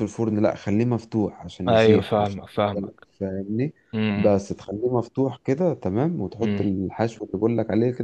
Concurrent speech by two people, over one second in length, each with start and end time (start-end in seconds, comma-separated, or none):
1.7-3.1